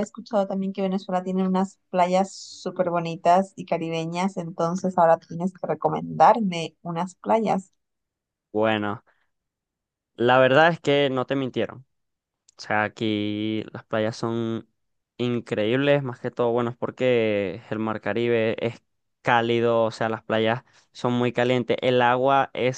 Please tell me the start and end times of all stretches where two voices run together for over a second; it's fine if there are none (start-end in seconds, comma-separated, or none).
none